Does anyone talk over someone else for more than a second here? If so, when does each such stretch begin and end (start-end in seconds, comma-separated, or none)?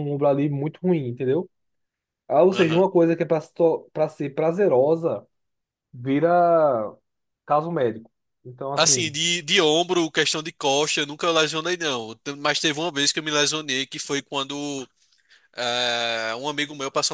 none